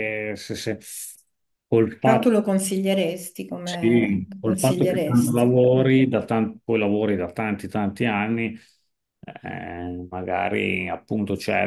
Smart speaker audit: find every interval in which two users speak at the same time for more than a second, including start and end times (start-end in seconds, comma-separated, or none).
3.7-5.9